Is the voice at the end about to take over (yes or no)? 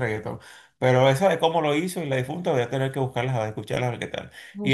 yes